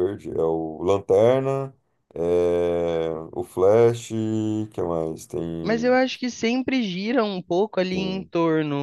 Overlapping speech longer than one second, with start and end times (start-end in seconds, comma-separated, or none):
none